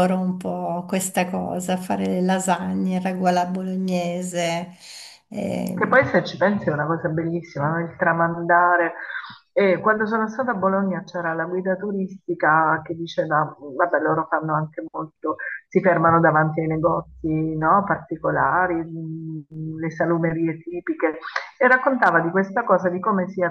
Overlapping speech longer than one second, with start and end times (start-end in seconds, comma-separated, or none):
none